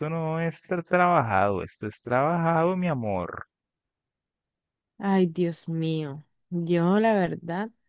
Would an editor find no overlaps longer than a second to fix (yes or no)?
yes